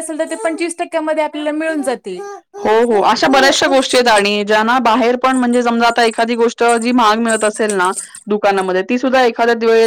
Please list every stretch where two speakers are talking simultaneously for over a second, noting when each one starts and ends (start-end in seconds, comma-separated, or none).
none